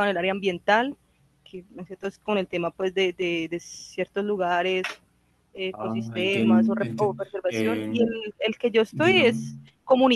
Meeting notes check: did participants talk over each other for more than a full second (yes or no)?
yes